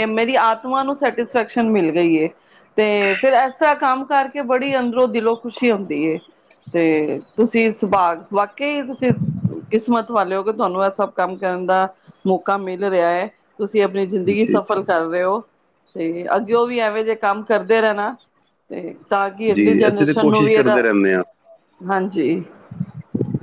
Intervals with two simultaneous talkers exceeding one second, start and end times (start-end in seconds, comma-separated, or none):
19.5-20.8